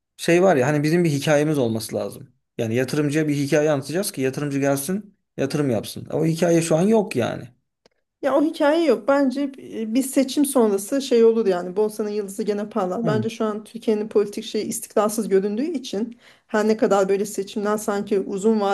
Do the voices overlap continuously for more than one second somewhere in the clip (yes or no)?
no